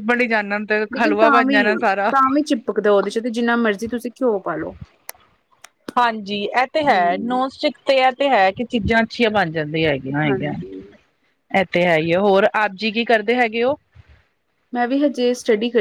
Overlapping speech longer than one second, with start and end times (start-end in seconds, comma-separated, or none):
none